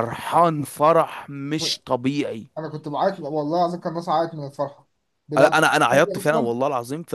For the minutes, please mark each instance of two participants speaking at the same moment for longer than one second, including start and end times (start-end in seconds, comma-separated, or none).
5.3-6.5